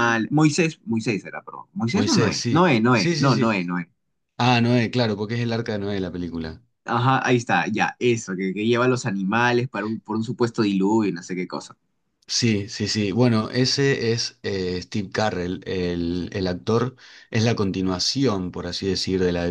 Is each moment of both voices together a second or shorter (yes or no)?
no